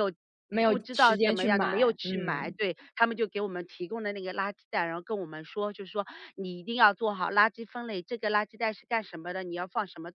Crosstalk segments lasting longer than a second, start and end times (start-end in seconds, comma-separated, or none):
0.6-2.5